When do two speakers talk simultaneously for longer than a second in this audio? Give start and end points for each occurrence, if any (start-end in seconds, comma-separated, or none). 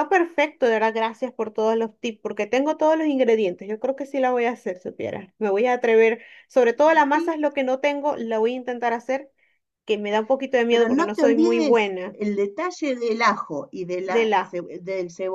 10.7-12.2